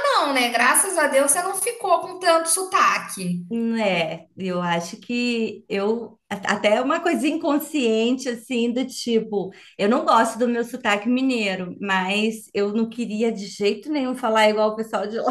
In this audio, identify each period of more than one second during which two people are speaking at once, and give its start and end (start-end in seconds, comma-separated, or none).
none